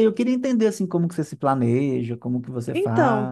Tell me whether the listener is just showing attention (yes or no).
no